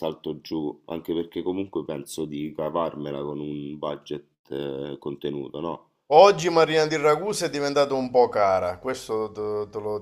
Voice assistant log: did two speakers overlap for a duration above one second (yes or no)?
no